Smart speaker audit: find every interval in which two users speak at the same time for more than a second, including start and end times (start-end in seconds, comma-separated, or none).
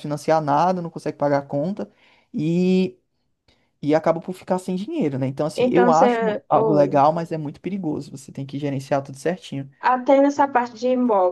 5.5-7.0